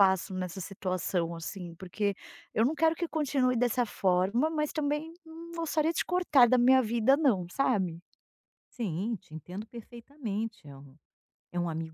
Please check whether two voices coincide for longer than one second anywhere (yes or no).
no